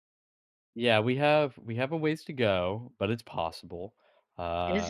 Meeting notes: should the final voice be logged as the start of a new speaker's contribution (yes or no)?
yes